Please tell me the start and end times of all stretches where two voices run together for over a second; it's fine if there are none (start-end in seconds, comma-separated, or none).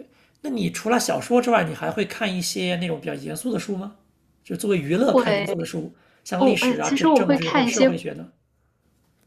6.4-7.9